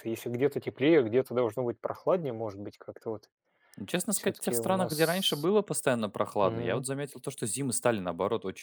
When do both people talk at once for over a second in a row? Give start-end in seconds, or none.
4.1-5.5